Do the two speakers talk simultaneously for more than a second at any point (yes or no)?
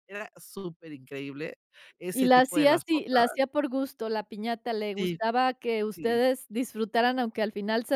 yes